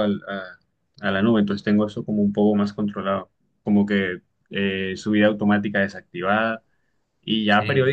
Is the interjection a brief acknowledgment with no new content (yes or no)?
yes